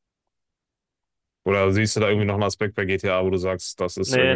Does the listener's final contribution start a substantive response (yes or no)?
yes